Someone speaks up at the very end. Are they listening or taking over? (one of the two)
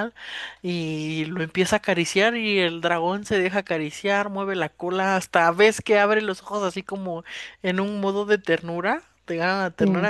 listening